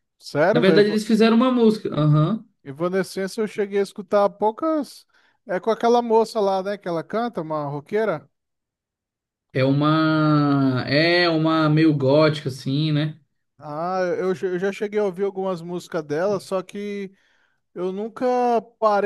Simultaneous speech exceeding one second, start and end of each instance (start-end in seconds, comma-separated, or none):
none